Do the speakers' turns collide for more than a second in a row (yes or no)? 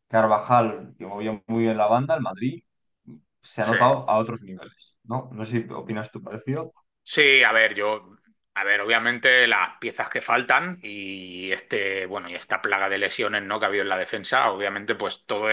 no